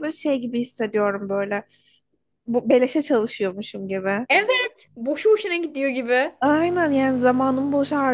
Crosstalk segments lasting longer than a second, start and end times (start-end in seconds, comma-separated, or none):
none